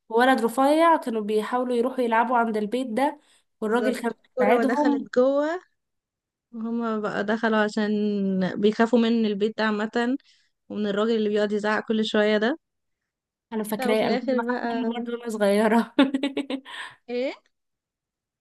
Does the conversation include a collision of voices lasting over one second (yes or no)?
yes